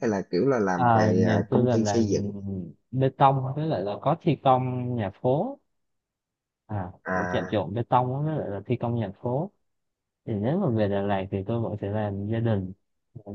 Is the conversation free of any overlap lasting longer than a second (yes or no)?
no